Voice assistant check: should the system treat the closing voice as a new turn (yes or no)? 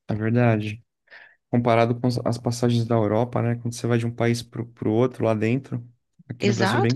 yes